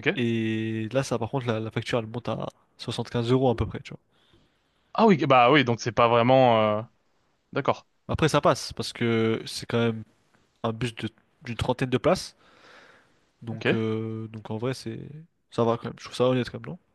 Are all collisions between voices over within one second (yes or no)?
yes